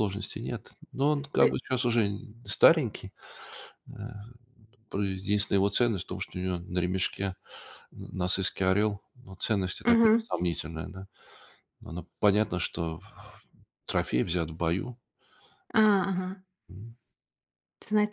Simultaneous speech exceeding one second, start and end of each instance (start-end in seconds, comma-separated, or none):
none